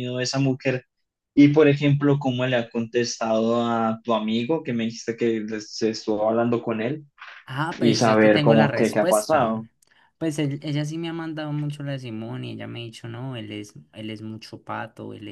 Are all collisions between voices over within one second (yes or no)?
no